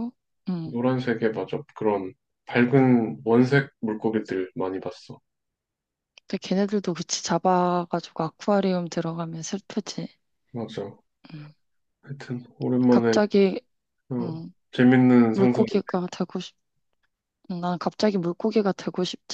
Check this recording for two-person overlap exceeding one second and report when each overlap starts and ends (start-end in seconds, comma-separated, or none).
none